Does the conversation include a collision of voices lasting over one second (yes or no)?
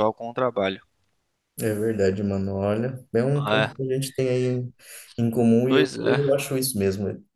no